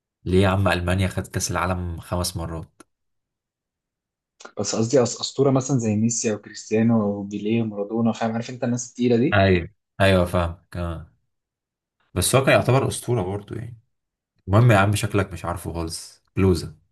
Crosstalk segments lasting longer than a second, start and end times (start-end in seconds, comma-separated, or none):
none